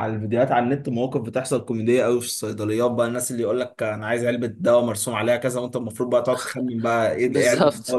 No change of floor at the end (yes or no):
no